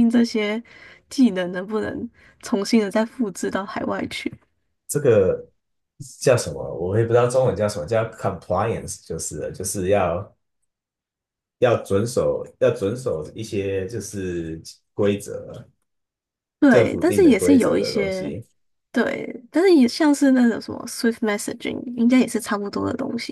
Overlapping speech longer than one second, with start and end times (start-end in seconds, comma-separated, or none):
16.7-18.3